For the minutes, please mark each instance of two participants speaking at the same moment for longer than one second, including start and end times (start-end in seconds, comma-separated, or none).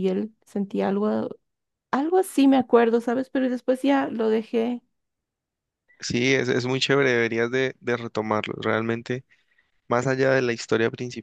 none